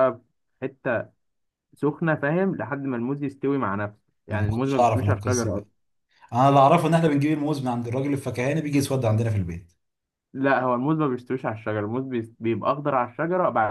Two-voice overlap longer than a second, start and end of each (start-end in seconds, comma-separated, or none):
4.3-5.7